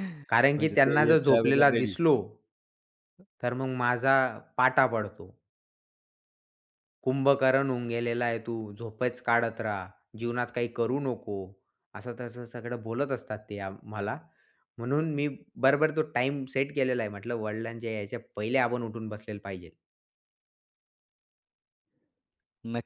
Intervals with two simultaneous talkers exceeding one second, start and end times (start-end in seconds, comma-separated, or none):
0.6-1.9